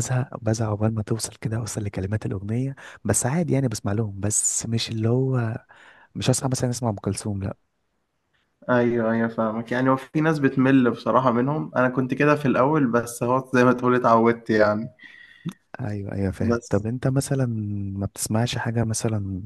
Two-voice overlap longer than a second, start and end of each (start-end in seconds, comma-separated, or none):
none